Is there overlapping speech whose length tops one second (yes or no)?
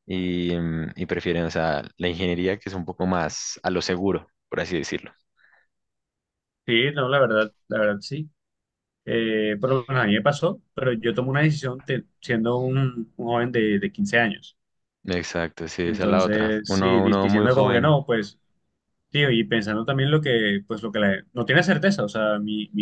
yes